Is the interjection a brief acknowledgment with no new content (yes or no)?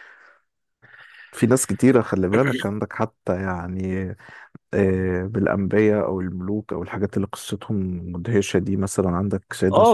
no